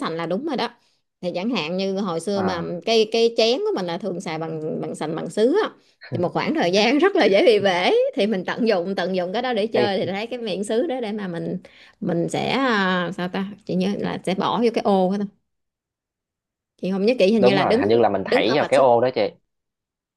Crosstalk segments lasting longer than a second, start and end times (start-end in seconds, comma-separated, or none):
17.4-18.9